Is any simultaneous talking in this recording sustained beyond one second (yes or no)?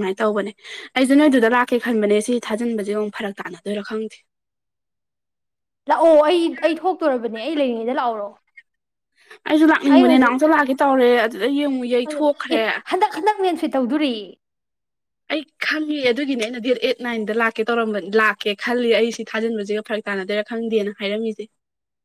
no